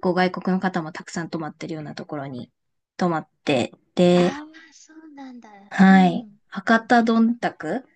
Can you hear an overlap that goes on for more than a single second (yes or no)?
no